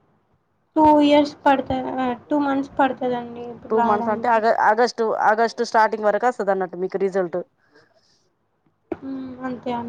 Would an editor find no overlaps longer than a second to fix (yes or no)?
yes